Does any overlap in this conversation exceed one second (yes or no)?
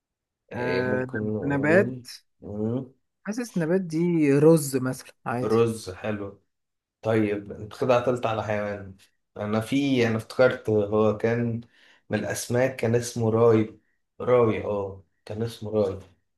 yes